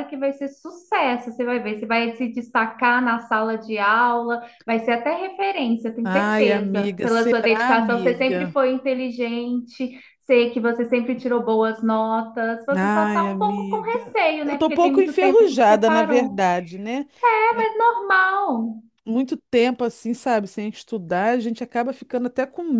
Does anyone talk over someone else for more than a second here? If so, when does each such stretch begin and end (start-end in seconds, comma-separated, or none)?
6.0-8.6, 12.7-16.4